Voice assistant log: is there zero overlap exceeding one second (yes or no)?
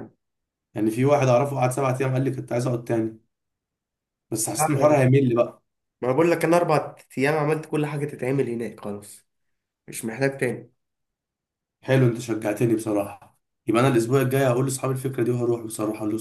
yes